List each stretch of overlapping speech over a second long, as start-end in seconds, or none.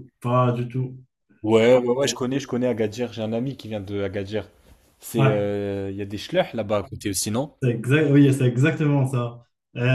none